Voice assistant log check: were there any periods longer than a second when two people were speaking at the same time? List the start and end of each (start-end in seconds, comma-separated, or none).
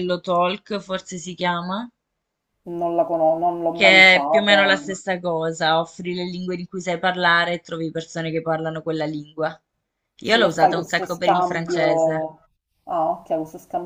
3.7-4.9, 10.2-12.3